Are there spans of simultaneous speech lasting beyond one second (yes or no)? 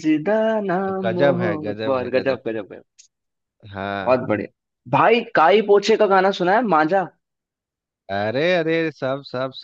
yes